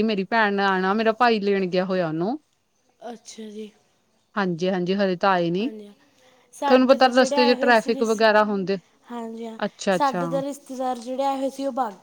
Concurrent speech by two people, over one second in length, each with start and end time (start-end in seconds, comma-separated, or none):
6.7-8.2